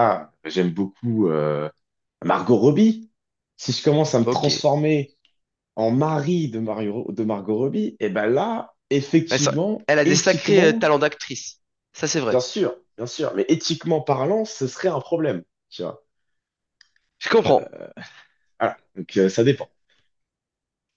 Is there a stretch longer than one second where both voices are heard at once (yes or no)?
yes